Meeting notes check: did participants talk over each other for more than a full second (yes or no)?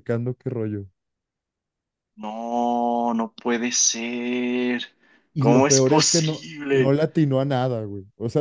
yes